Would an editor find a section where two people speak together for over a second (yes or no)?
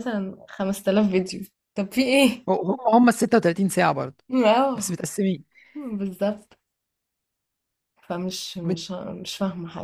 no